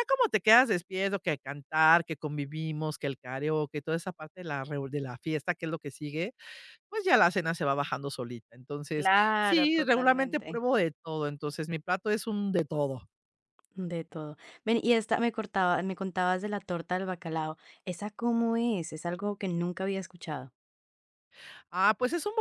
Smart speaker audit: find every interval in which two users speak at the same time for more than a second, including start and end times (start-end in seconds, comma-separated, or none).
8.9-10.6